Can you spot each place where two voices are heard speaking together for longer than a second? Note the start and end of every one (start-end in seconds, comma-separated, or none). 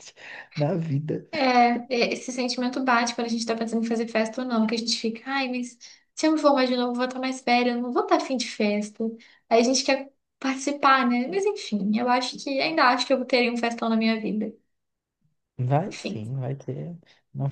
none